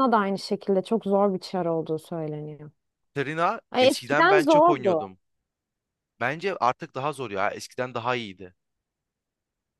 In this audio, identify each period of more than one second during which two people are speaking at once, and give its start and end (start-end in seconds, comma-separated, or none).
3.7-5.0